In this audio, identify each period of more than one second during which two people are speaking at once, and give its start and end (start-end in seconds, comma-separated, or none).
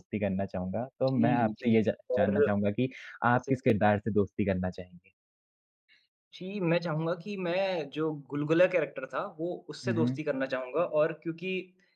1.1-2.5